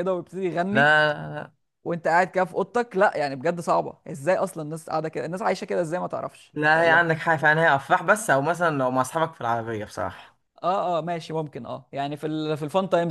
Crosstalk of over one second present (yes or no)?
no